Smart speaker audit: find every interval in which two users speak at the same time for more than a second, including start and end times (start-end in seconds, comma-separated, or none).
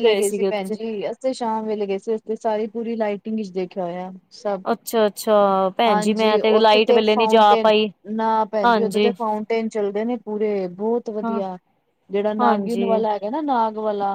5.9-7.7